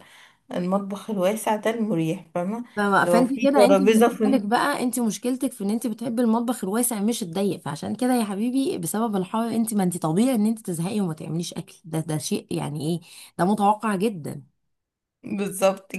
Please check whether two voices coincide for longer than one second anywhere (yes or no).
yes